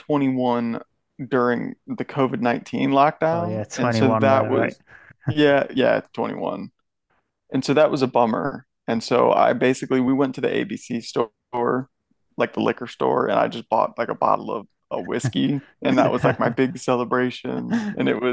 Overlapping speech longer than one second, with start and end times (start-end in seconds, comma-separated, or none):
3.3-4.7